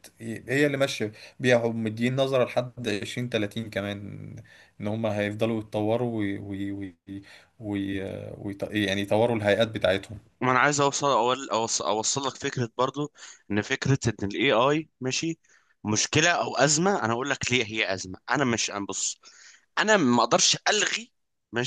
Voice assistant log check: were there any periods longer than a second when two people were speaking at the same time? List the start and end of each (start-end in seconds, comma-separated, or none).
none